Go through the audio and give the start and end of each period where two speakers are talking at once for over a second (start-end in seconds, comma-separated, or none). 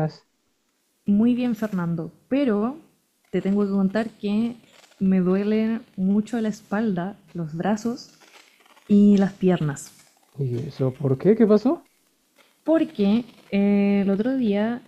none